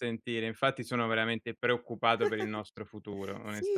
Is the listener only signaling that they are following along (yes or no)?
no